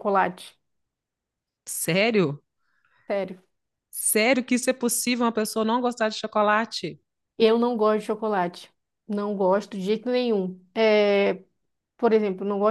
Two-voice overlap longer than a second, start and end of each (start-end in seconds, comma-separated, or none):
none